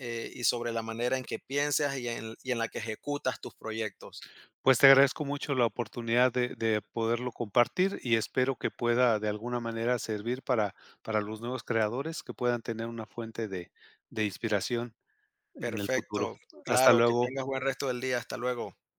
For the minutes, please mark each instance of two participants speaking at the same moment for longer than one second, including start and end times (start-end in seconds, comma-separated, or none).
15.6-17.4